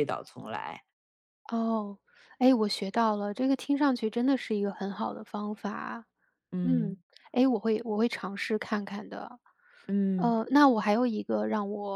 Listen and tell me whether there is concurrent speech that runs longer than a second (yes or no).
no